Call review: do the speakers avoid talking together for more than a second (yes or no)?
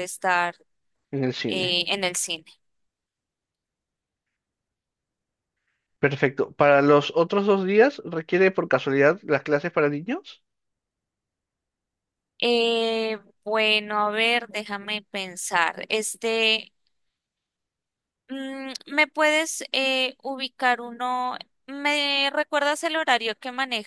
yes